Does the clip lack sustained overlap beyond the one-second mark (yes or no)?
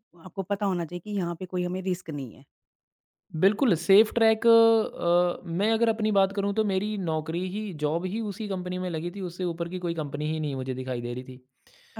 yes